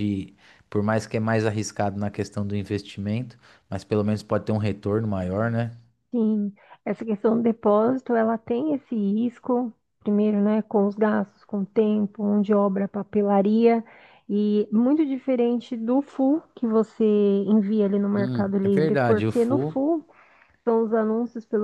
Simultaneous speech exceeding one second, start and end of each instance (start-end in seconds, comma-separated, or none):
18.1-19.8